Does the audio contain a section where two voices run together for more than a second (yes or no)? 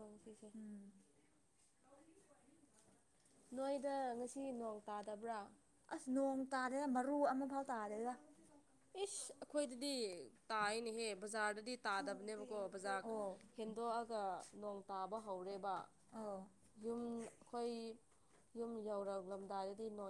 no